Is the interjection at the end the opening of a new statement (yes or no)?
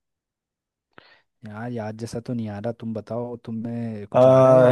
yes